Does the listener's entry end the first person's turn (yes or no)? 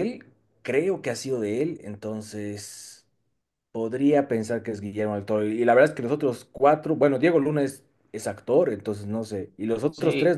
yes